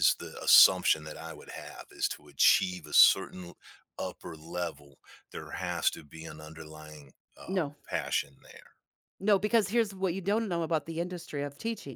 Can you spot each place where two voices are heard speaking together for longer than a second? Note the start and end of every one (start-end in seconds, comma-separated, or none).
none